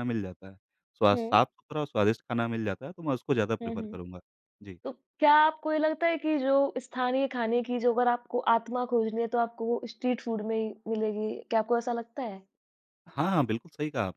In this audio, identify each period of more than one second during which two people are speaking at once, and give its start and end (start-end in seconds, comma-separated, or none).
none